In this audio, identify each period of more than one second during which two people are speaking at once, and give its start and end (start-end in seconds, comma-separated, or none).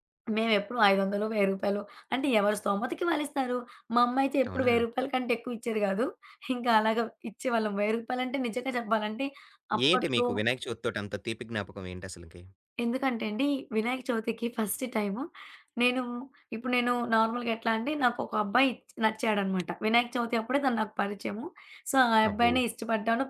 none